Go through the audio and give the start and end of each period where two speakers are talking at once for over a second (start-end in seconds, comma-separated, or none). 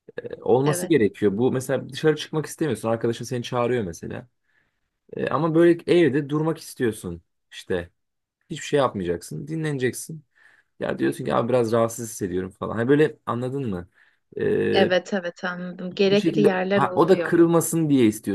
16.0-17.4